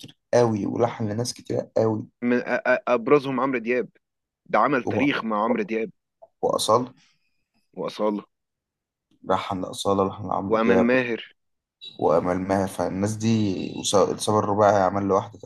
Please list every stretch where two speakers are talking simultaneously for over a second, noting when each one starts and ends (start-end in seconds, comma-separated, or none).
none